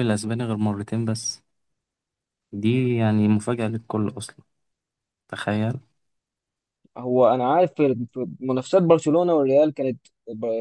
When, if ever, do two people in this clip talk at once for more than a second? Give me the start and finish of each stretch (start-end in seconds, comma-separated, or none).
none